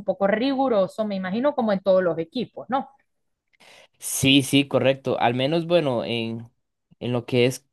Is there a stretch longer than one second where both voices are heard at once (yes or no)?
no